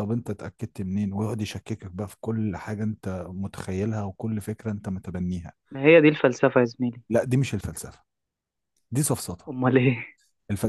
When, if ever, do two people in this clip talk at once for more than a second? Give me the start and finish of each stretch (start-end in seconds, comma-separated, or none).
none